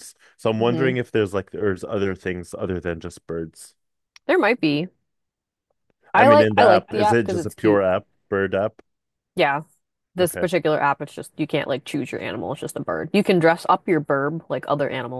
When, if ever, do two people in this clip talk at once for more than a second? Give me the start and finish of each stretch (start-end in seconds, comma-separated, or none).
6.1-7.8